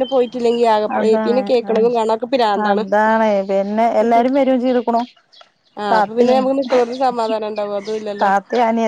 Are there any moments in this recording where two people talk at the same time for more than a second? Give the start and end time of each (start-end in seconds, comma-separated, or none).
none